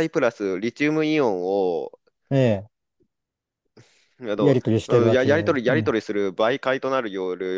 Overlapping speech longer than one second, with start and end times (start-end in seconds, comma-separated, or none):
4.4-6.0